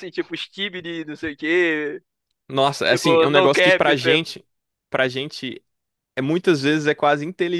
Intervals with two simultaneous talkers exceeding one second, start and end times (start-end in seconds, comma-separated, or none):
2.9-4.2